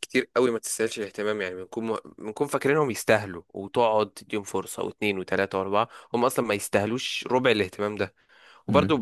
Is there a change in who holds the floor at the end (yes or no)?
no